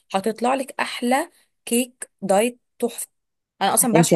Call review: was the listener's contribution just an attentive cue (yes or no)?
no